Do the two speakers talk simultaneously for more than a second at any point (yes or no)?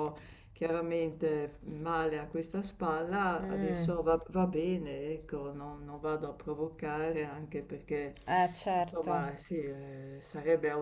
no